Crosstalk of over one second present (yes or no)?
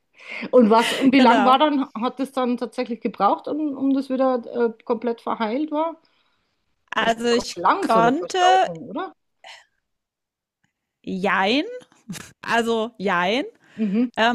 yes